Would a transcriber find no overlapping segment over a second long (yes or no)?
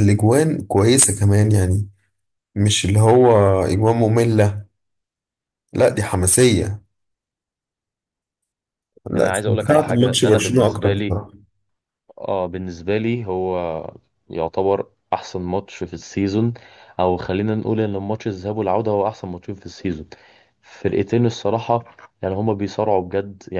no